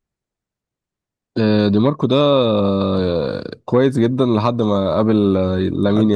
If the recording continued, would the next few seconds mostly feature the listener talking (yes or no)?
yes